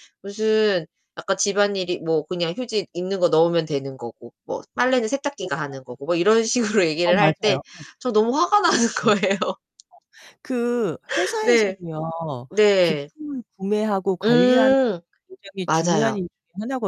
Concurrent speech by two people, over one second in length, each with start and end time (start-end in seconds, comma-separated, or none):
none